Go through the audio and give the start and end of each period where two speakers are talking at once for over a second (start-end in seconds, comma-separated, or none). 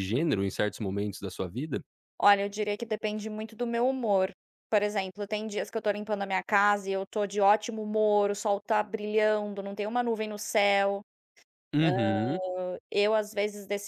none